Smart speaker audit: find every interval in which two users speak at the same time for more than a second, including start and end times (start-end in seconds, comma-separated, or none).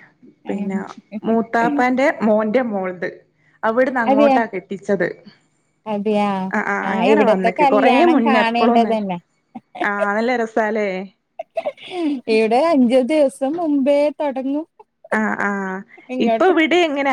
6.9-8.9